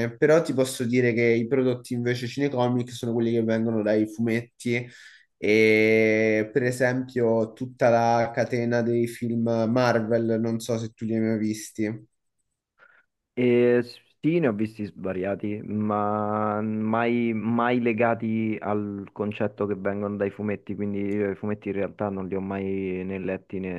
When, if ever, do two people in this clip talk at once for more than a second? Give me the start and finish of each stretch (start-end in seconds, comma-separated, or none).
none